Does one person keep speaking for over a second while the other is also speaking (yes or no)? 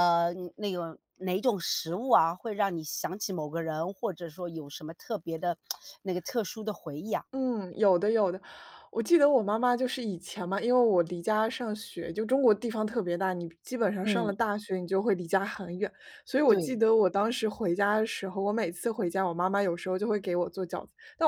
no